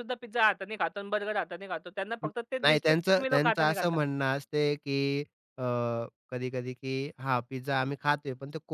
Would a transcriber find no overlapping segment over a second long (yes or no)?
no